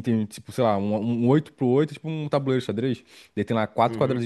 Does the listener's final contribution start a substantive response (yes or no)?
no